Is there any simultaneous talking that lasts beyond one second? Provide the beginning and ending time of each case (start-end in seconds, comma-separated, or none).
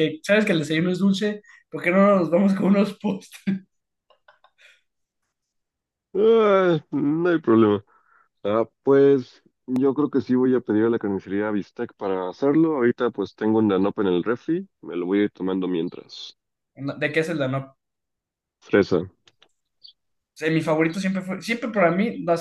none